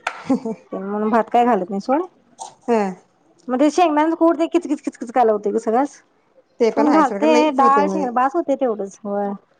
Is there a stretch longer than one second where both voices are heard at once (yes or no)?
yes